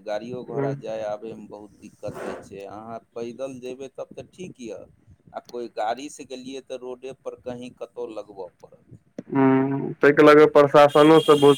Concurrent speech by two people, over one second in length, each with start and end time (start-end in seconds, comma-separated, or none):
none